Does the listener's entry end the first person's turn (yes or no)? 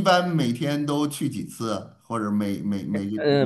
yes